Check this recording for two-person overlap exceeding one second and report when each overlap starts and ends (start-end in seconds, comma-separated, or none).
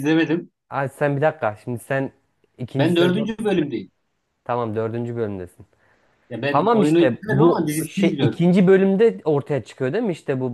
6.5-8.4